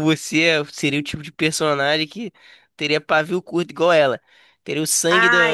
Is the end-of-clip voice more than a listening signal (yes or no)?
yes